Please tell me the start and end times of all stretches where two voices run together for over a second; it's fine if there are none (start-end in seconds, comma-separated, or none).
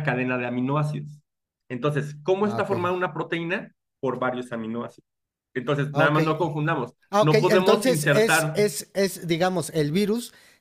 7.1-8.6